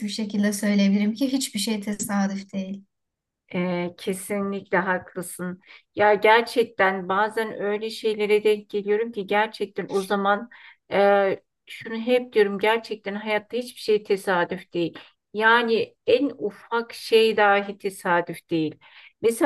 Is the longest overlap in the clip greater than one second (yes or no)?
no